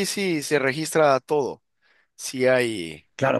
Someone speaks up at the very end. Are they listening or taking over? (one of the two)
taking over